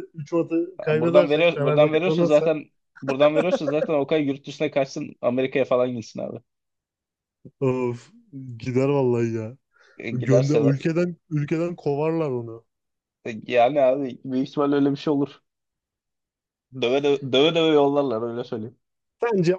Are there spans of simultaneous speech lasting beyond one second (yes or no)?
yes